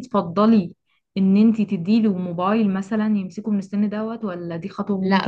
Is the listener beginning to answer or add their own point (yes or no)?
yes